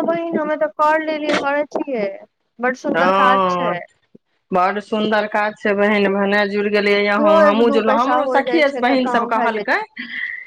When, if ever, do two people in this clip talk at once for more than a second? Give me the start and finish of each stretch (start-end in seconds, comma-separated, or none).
7.2-9.8